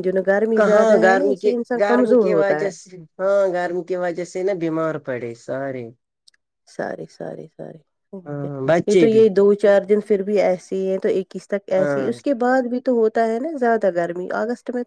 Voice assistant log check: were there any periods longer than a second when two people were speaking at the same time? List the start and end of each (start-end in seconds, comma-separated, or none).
0.6-2.7